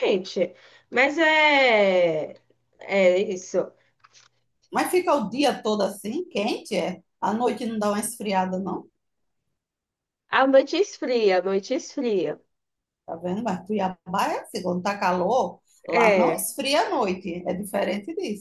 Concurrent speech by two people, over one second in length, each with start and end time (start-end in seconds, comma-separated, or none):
none